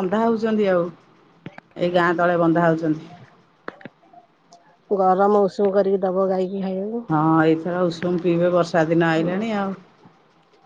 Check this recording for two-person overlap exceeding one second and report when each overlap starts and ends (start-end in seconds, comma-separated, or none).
none